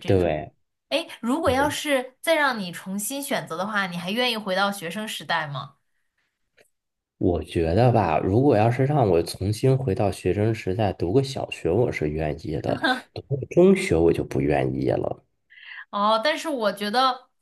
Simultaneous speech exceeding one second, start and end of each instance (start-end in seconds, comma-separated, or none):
none